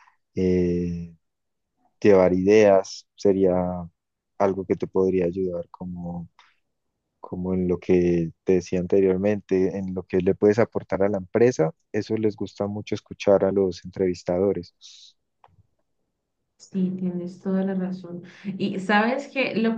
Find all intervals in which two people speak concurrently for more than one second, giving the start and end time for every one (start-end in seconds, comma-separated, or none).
none